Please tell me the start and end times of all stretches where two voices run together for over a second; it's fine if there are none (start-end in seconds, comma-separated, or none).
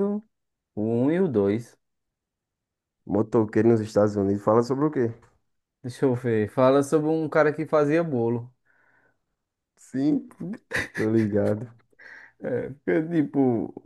none